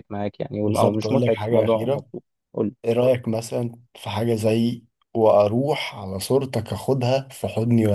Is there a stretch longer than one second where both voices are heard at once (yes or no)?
yes